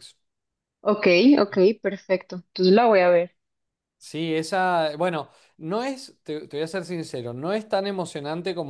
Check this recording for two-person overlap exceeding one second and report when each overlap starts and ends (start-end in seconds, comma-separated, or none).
none